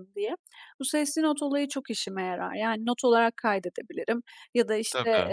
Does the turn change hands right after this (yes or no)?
no